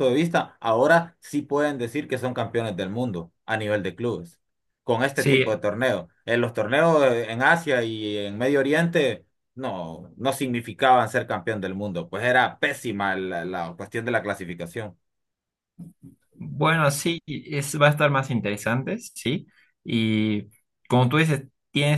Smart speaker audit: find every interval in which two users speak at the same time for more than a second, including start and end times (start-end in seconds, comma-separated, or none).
none